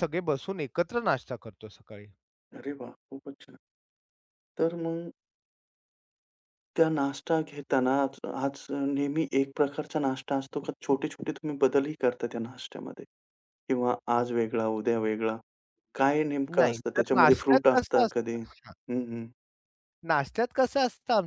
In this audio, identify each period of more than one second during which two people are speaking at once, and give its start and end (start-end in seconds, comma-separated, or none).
16.6-18.4